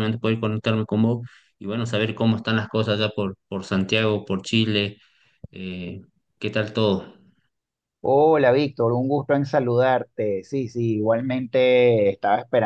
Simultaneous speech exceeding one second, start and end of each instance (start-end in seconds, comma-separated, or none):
none